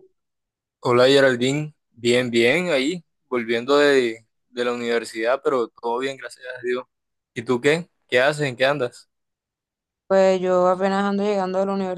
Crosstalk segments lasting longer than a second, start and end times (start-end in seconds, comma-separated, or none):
none